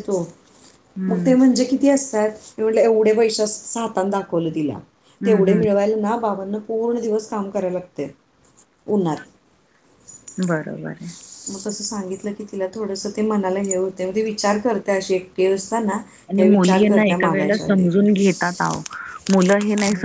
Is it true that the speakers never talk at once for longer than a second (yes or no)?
no